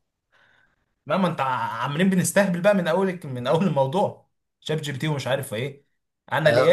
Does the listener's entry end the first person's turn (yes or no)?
yes